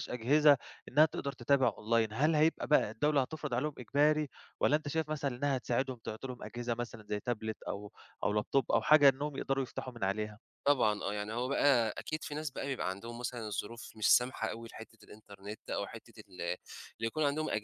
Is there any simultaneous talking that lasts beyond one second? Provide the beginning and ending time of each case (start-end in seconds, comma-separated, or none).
none